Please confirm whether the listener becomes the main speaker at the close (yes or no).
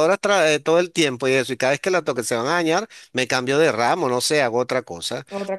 no